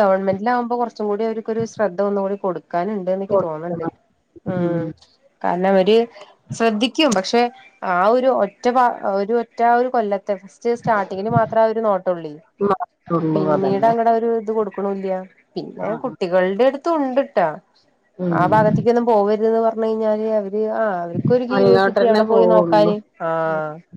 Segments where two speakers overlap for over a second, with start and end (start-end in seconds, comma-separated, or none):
21.6-22.9